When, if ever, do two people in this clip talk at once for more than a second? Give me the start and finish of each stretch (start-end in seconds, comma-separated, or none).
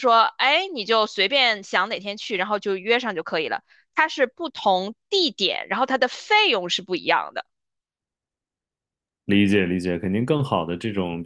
none